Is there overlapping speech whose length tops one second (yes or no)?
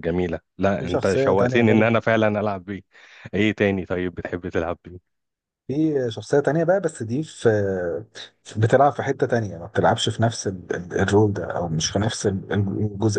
yes